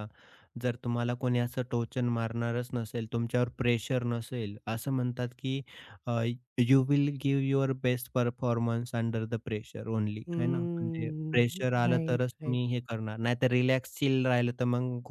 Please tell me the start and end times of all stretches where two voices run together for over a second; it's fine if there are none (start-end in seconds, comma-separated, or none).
10.3-12.6